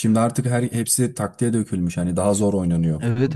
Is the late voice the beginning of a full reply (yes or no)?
yes